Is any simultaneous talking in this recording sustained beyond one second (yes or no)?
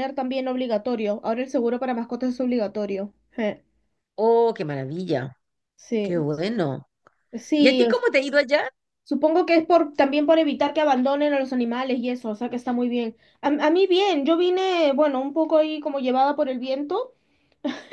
no